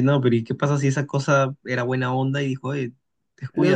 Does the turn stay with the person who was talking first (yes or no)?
no